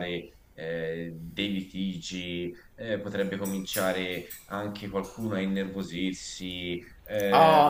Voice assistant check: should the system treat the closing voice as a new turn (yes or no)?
yes